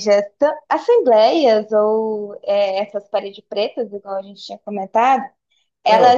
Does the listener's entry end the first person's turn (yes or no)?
no